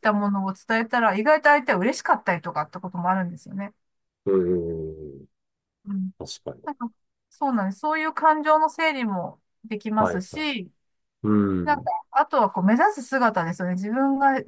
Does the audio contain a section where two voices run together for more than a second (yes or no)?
no